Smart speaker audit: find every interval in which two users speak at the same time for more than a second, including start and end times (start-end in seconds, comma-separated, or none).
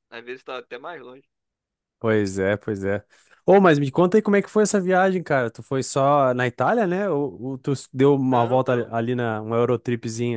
none